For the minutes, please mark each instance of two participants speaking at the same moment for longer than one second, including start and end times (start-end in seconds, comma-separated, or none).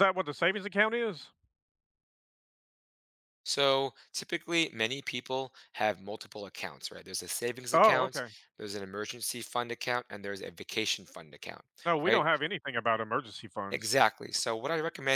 none